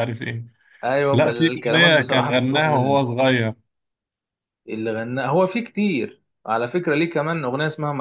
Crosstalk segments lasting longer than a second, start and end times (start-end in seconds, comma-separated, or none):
1.1-3.0